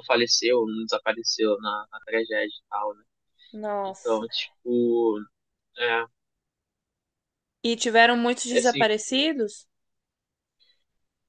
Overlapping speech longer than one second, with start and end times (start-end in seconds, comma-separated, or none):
none